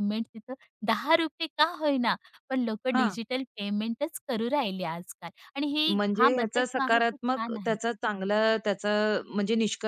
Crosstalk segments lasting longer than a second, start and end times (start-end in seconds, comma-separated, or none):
6.0-7.8